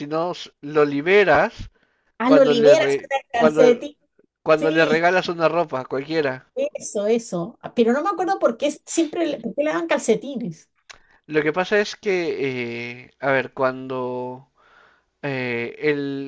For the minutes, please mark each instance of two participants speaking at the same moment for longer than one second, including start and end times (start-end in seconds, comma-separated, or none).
2.2-3.6